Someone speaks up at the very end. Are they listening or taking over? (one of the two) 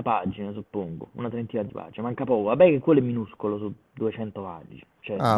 taking over